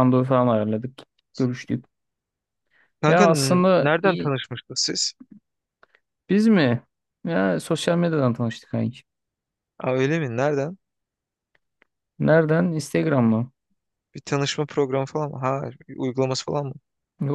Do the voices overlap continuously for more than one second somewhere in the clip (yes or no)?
yes